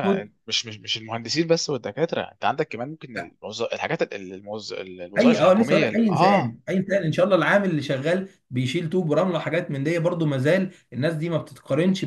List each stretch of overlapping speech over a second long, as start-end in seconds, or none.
5.2-6.5